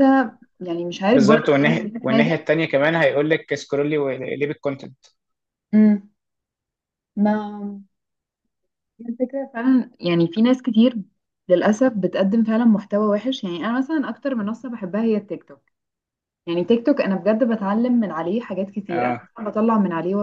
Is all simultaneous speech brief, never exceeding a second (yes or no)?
no